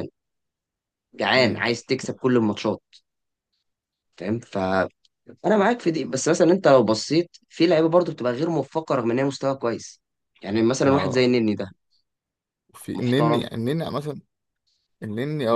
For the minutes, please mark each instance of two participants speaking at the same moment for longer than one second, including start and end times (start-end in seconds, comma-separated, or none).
none